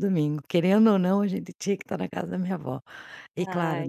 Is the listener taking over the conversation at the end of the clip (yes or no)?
no